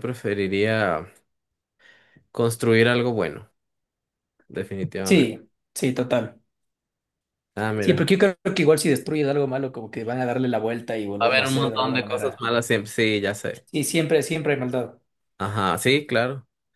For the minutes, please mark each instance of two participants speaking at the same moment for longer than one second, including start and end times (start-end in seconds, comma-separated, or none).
11.2-12.5